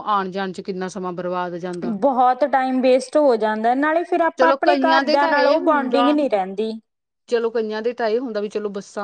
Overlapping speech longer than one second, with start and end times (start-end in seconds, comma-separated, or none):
4.4-6.2